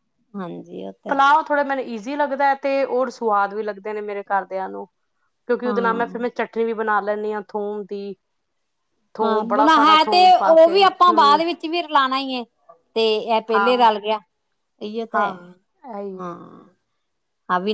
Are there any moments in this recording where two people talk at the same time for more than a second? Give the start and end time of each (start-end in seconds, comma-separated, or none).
9.2-11.4